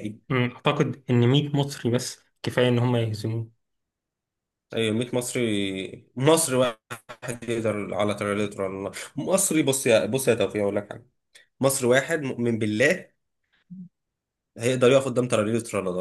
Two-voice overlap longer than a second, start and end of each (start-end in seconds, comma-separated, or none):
none